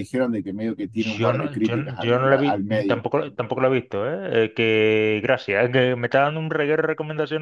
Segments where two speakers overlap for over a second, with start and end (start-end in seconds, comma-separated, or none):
0.9-3.1